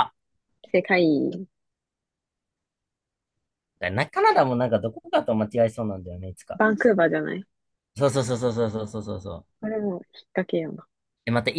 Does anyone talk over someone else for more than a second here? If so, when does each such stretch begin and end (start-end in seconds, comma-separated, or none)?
none